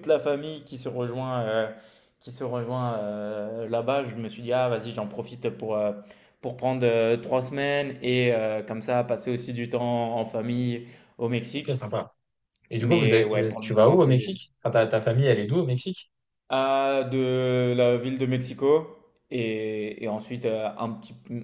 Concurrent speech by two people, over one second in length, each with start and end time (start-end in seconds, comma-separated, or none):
12.8-14.3